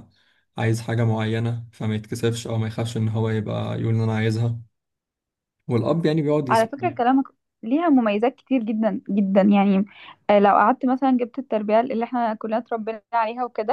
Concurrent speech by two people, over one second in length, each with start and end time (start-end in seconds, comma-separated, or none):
none